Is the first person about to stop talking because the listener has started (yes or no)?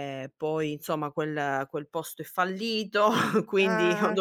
no